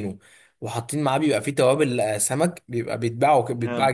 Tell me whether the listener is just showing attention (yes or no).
yes